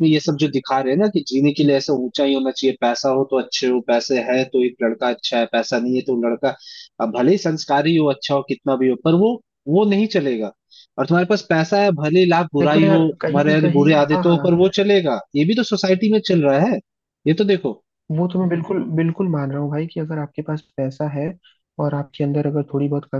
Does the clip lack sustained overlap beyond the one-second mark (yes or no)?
no